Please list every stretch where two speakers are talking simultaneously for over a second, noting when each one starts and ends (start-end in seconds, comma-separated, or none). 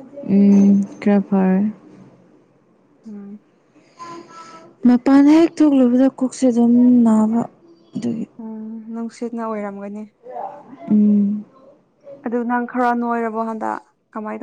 none